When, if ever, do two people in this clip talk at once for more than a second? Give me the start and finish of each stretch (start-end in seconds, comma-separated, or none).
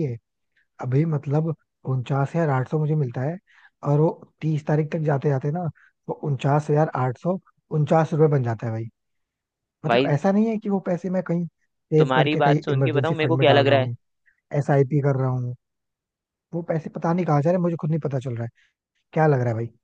12.0-13.9